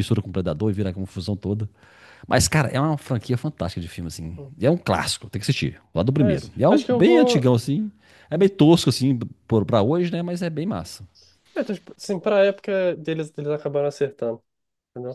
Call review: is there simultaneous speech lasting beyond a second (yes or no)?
yes